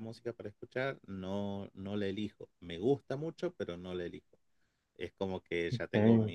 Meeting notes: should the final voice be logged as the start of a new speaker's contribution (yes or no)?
no